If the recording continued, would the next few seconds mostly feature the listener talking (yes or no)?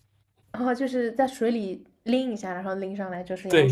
yes